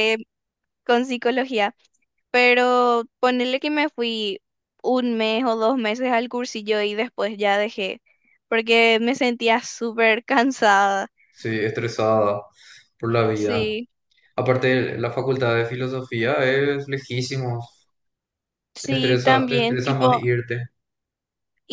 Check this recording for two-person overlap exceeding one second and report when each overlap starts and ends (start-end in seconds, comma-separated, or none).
18.8-20.2